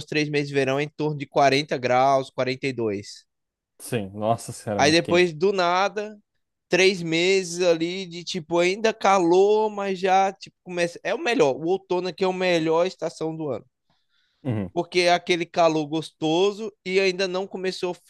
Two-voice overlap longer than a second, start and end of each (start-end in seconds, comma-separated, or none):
none